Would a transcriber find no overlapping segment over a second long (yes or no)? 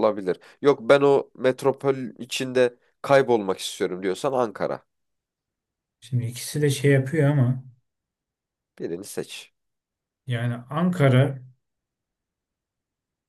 yes